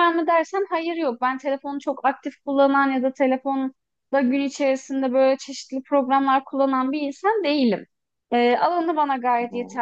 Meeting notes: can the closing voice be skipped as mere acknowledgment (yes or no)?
yes